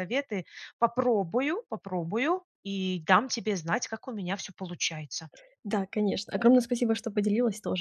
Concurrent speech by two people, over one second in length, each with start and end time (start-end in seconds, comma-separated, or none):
none